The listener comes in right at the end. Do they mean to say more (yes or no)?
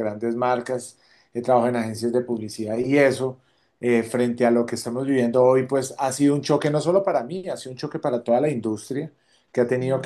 no